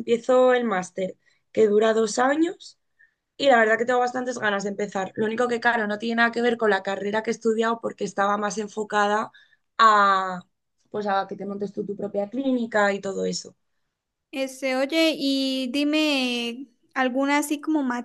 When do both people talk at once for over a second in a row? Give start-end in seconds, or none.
none